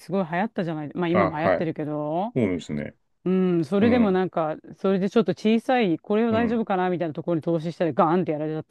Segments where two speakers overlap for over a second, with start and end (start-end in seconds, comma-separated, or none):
none